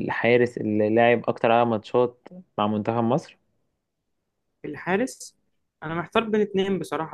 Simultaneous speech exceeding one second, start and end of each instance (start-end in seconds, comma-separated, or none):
none